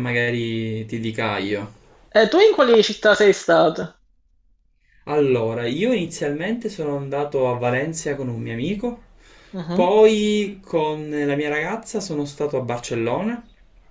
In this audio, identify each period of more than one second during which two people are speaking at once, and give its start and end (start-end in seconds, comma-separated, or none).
none